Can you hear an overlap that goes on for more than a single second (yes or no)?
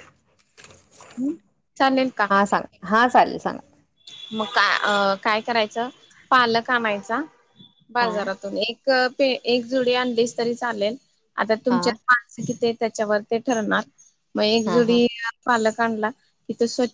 no